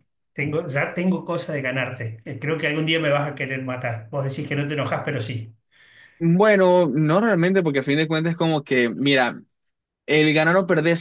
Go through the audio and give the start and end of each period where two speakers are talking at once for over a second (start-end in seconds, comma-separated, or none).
none